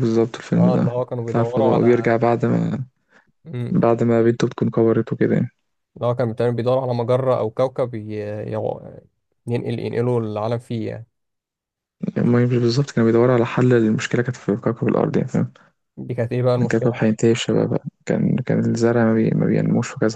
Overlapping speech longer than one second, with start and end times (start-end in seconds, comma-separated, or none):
0.6-2.1